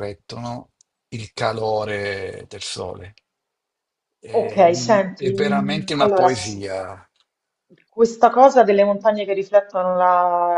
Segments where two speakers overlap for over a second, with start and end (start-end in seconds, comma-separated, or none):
4.4-6.7